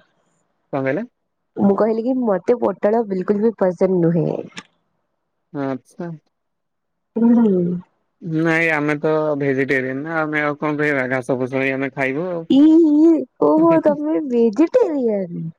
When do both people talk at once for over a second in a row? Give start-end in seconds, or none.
none